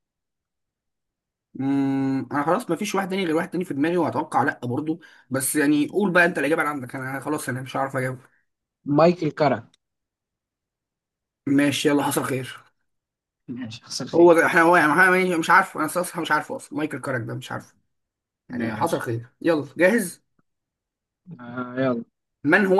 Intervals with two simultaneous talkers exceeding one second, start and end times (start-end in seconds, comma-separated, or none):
none